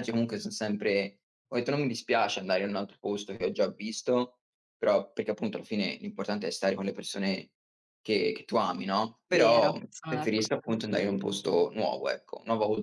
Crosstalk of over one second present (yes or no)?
yes